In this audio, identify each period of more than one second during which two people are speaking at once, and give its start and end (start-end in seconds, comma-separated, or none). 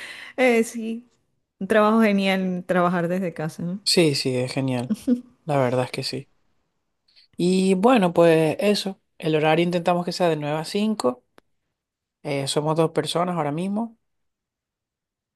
none